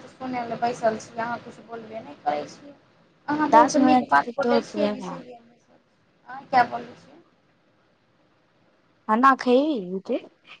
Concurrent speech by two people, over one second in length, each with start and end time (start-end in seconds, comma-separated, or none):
3.5-5.3